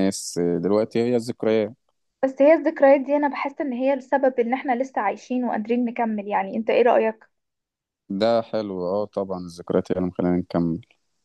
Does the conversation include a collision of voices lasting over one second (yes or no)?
no